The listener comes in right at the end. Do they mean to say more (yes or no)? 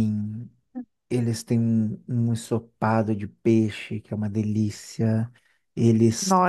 no